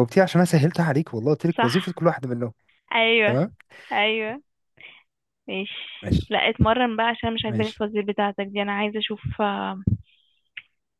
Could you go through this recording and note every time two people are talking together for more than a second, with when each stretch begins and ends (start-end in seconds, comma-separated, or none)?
none